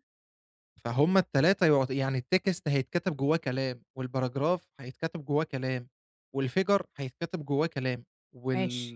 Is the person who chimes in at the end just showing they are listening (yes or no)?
yes